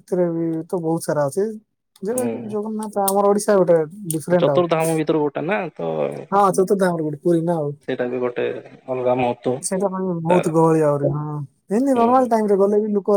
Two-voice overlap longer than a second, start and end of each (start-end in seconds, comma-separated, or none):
none